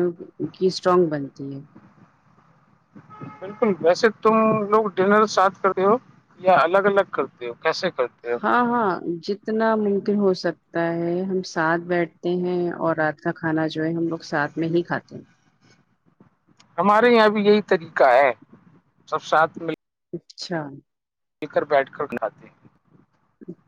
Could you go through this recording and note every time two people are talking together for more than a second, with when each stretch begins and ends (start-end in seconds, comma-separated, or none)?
none